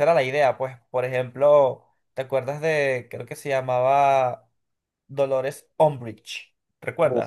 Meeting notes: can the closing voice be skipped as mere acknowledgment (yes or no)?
no